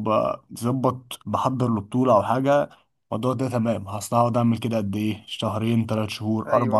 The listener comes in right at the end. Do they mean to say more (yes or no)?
no